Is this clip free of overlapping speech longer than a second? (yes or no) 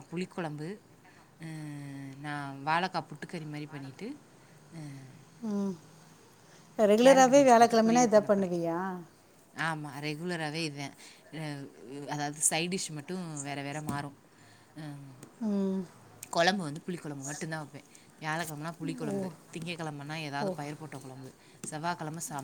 no